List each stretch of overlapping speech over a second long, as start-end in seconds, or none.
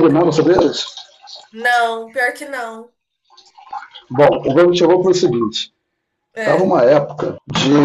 none